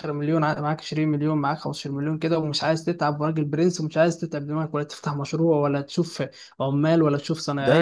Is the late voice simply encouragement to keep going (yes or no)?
no